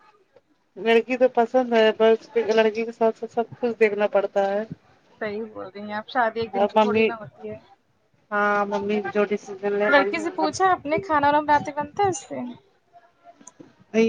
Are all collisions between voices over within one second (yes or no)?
yes